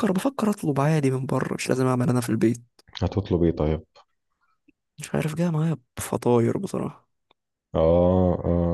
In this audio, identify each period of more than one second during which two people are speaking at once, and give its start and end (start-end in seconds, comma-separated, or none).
none